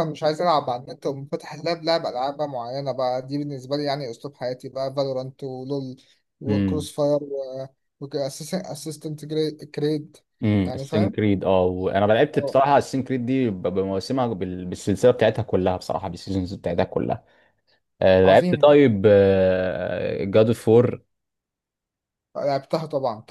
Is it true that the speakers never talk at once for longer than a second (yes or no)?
yes